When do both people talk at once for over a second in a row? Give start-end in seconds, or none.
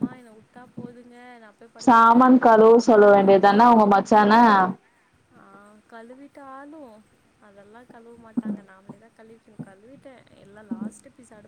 1.9-3.8